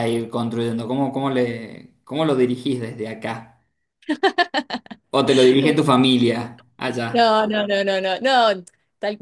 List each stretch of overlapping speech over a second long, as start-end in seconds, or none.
none